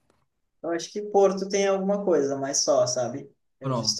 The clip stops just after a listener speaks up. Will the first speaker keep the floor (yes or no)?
yes